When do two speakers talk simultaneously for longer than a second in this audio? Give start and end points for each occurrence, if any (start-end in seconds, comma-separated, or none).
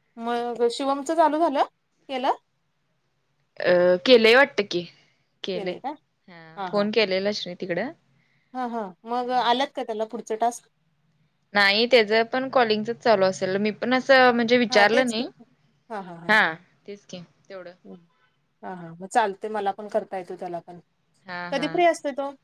none